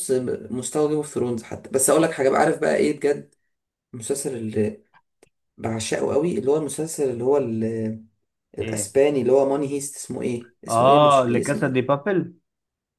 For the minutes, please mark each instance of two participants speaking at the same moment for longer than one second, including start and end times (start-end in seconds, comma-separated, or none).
10.7-11.9